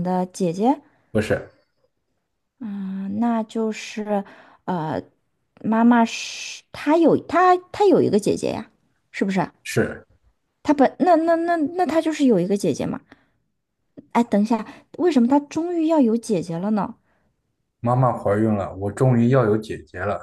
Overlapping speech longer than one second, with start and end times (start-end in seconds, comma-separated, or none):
none